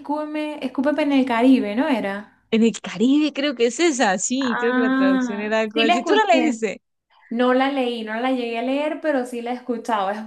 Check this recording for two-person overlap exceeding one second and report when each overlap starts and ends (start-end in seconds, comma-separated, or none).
4.4-6.6